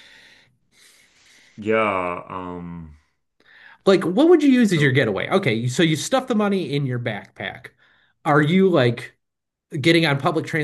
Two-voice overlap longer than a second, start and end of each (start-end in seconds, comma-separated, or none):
none